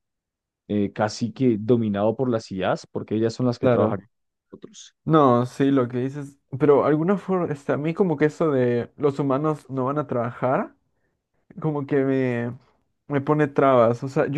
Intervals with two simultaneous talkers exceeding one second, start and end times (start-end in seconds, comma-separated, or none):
none